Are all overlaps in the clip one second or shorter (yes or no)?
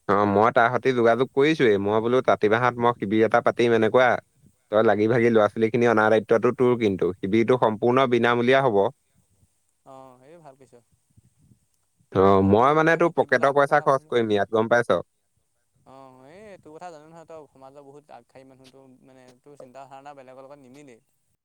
no